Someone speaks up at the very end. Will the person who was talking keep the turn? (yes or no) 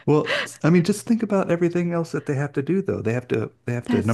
yes